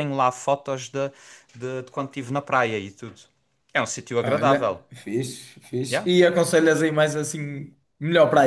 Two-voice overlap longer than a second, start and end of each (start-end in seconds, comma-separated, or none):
none